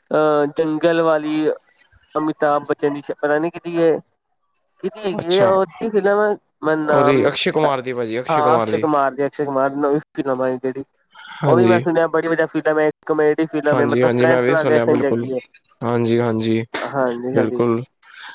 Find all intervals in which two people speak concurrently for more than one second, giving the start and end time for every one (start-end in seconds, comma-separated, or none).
none